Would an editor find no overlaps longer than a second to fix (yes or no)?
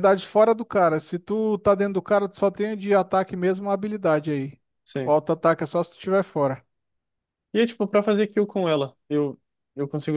yes